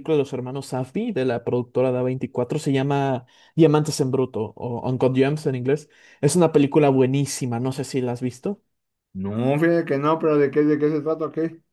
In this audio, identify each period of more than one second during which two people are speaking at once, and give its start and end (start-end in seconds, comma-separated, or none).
none